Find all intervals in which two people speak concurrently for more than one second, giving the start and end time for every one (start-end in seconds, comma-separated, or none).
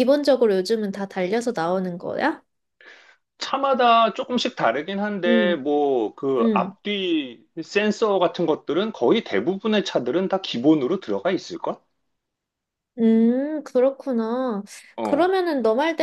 none